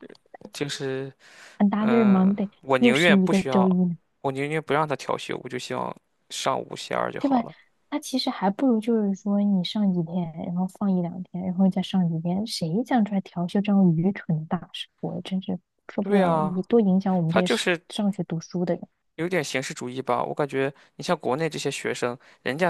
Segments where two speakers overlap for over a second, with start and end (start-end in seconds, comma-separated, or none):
1.8-3.8